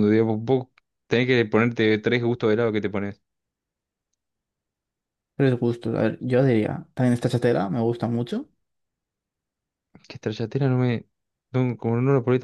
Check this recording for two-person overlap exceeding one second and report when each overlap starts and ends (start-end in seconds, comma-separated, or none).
none